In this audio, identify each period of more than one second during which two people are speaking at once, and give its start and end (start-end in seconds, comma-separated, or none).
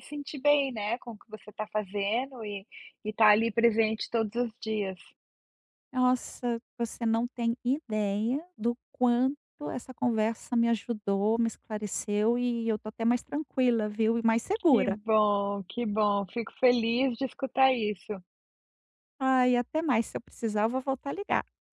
none